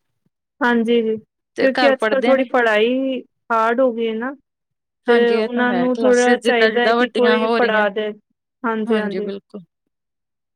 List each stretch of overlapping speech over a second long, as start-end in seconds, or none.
5.1-7.8